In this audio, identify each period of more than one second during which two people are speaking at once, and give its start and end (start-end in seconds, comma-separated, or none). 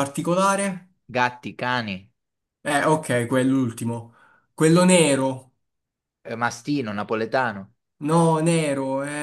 none